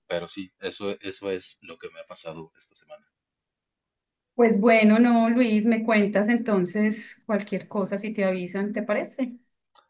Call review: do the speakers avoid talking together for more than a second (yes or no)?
yes